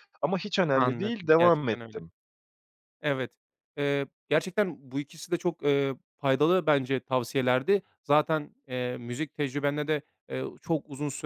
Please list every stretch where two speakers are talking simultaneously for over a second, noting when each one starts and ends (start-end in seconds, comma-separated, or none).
0.7-2.0